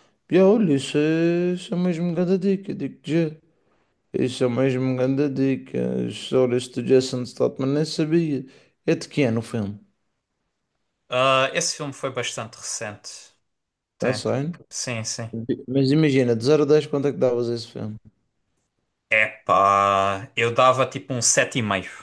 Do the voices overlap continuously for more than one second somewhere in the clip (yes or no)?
no